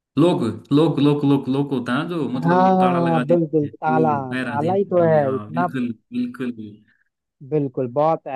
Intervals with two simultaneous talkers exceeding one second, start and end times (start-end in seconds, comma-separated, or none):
2.4-5.7